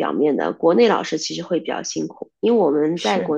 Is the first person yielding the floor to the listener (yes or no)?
no